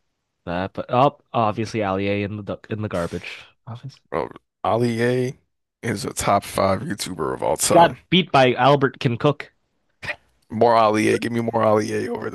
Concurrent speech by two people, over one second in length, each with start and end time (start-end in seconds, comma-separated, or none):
none